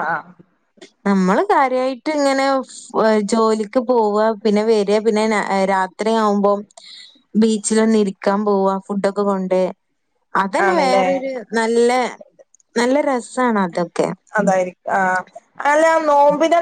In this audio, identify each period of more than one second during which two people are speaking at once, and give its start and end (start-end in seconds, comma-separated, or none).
none